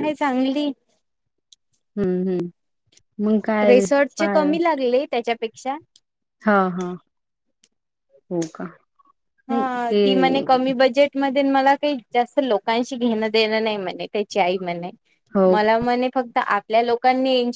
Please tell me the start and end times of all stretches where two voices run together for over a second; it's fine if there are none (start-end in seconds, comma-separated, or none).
none